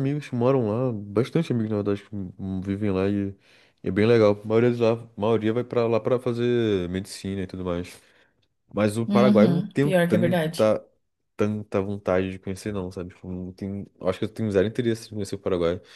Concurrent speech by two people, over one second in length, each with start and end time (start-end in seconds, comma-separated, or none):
9.1-10.7